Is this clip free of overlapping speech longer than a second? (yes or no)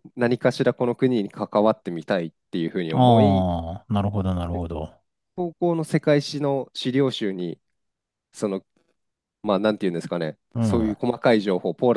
yes